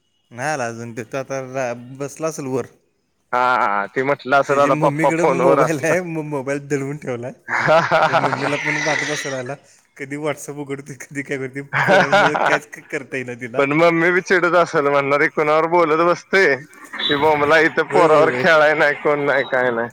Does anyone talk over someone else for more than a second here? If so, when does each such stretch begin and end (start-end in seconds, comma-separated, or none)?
4.5-6.1